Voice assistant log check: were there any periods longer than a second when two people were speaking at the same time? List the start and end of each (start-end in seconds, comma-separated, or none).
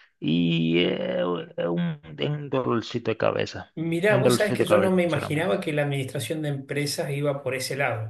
3.8-5.6